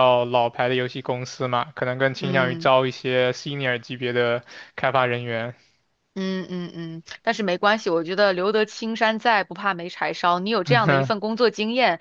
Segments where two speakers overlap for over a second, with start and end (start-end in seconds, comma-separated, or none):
none